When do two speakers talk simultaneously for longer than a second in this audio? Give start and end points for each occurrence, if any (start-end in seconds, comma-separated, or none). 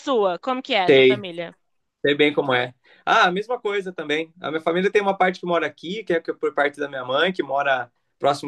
none